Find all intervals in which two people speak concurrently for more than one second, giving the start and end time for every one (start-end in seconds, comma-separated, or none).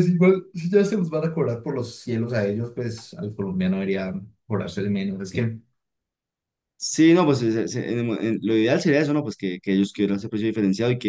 none